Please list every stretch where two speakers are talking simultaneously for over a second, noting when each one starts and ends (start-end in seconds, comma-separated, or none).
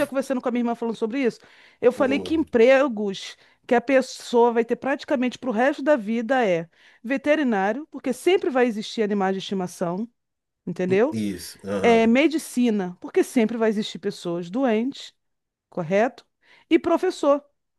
none